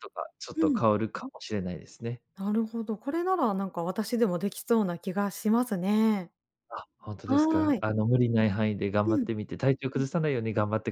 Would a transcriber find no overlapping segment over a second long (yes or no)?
yes